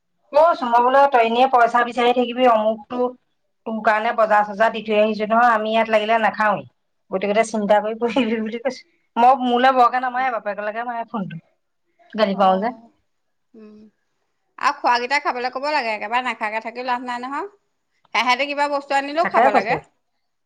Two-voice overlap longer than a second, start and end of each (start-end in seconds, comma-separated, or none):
none